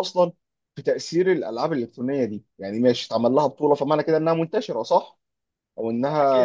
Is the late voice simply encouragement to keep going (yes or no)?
no